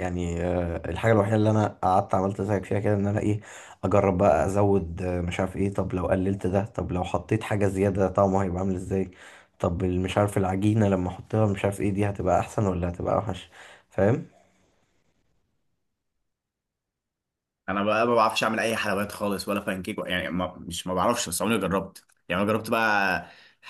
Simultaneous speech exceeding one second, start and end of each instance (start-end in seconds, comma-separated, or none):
none